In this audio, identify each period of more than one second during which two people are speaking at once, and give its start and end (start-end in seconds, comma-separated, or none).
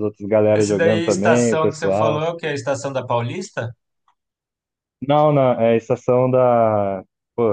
0.5-2.2